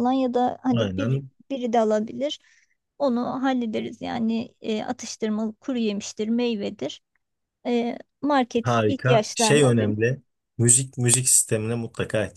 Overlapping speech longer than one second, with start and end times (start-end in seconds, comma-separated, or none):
8.6-10.0